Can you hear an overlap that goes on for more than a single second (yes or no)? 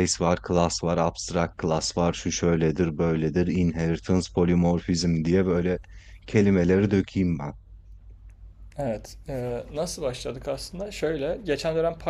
no